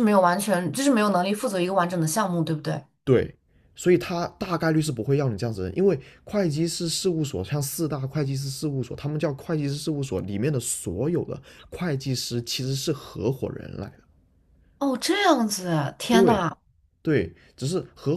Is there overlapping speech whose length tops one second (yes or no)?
no